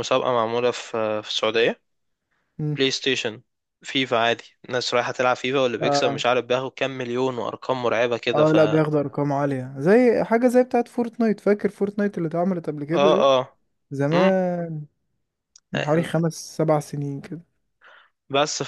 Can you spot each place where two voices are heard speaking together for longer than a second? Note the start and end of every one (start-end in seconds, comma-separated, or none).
none